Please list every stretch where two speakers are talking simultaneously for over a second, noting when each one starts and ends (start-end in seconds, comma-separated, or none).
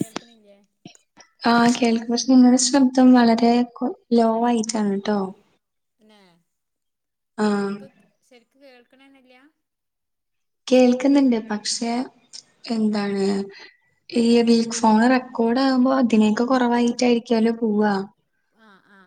none